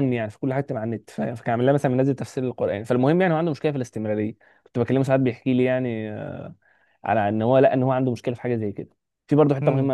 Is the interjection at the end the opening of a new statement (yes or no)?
no